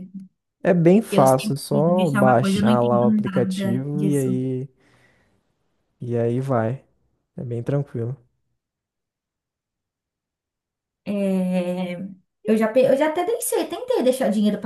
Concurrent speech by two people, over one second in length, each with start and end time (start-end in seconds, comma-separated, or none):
1.1-4.3